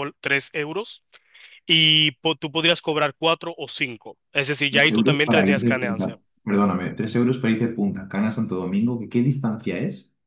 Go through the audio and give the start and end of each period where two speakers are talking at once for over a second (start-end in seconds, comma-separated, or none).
4.7-6.1